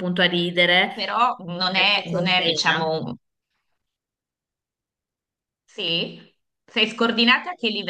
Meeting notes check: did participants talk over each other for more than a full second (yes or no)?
yes